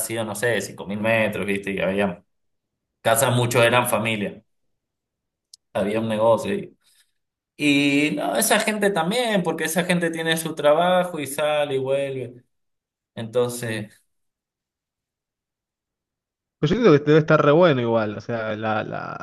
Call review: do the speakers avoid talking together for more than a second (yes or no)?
yes